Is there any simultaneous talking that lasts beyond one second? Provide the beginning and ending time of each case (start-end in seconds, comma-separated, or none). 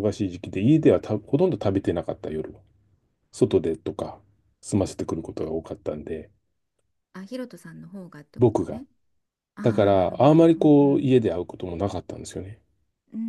9.6-11.1